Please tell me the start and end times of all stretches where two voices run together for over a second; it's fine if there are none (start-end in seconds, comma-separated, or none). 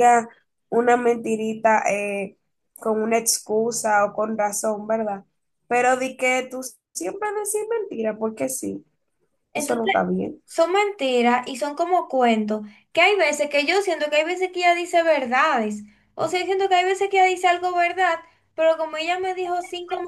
none